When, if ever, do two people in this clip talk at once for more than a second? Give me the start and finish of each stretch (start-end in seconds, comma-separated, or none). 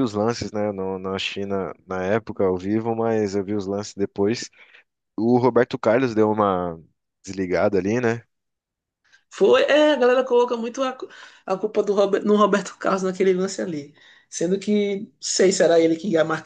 none